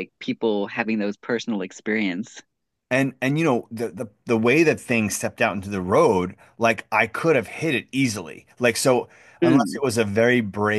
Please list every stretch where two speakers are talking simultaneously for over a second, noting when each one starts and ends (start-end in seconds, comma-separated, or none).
none